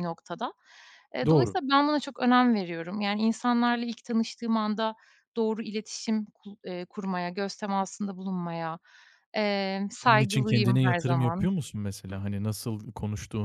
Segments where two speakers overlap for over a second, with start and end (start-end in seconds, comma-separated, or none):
10.0-11.5